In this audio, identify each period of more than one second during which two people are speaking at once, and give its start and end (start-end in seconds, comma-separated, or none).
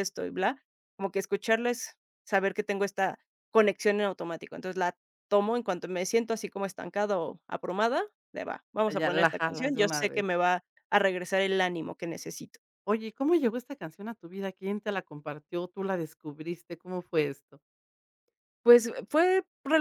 9.0-10.2